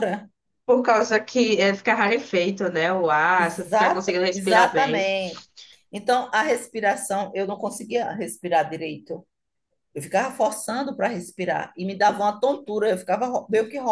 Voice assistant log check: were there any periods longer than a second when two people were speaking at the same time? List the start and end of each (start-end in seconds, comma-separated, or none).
3.4-5.1